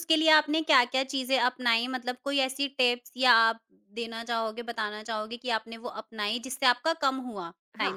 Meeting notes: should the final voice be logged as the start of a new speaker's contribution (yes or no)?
yes